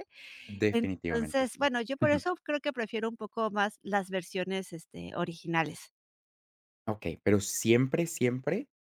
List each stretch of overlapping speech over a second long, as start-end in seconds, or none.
0.7-2.2